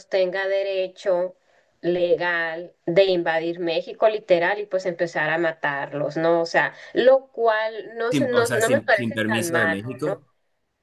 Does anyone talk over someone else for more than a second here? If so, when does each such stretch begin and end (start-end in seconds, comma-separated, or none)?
8.1-10.2